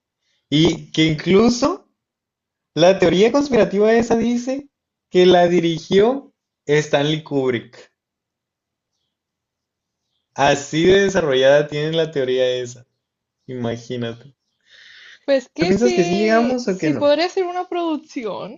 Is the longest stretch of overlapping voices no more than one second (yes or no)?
no